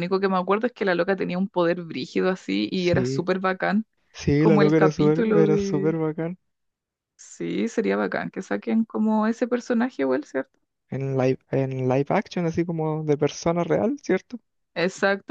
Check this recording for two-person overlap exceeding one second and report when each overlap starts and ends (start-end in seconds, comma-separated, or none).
4.4-6.0